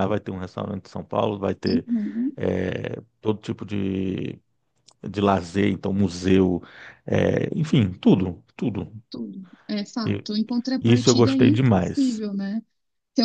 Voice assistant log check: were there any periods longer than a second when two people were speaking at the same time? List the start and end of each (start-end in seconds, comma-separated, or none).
10.8-12.2